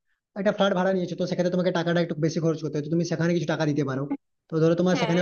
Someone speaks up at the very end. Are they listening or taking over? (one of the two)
listening